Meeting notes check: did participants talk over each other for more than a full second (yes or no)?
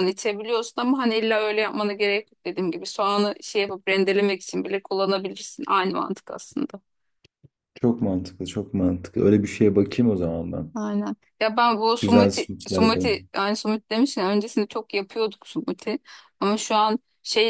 yes